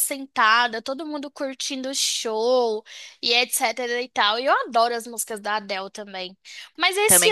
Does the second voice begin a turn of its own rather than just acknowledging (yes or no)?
no